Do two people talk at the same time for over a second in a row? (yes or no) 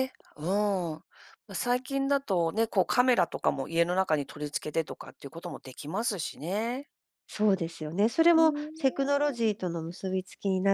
yes